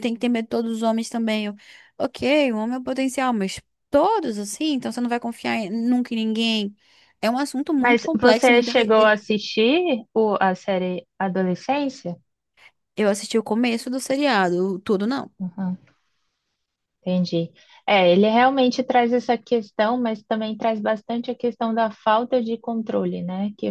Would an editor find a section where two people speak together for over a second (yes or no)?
yes